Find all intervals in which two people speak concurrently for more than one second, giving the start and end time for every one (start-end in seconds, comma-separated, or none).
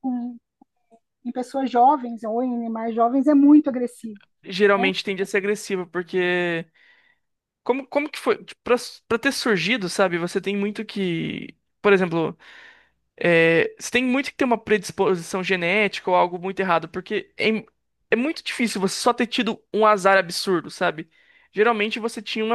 none